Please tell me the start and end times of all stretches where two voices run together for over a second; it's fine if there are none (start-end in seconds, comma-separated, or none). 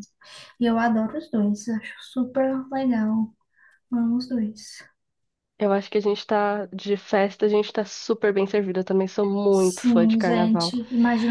9.5-10.7